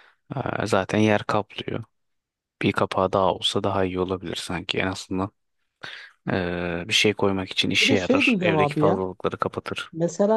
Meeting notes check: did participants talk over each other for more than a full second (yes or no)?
yes